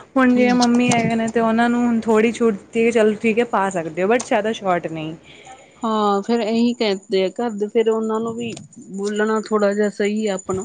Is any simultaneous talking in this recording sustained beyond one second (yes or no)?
no